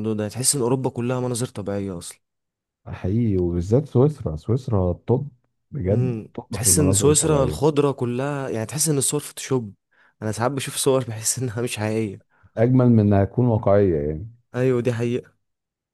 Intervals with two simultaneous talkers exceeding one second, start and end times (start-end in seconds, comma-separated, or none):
5.9-7.6